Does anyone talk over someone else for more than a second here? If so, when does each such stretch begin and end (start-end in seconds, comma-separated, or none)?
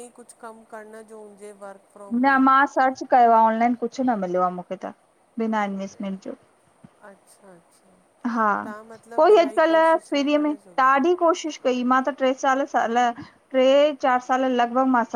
9.2-10.9